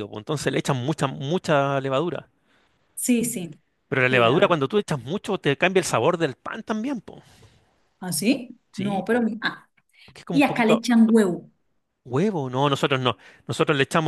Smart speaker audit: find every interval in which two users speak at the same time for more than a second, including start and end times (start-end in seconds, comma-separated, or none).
none